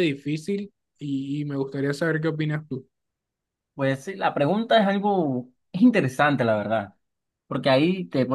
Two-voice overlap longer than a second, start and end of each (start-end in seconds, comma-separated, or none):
none